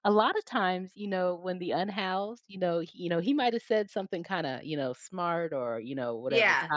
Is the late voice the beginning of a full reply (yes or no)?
no